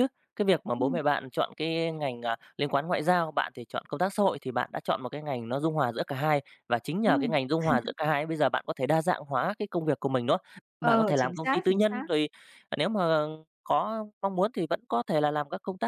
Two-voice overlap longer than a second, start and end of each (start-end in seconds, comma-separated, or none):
10.8-12.0